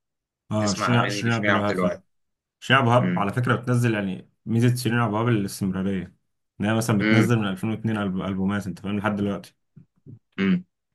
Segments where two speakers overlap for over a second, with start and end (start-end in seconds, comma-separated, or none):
0.6-2.0